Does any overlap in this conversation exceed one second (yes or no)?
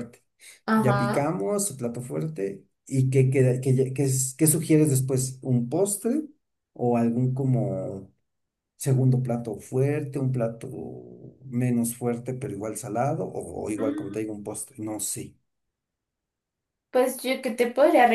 no